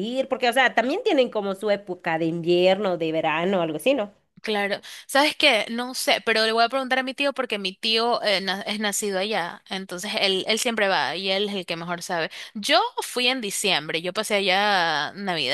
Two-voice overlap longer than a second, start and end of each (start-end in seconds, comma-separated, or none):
none